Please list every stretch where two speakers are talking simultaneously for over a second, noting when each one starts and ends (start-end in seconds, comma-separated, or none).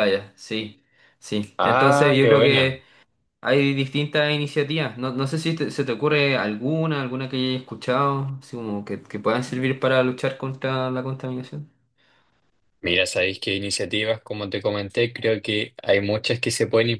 1.6-2.8